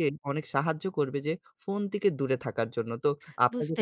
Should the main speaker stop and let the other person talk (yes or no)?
yes